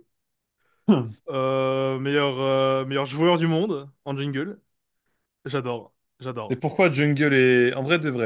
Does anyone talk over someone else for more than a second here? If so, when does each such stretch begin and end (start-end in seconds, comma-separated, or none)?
none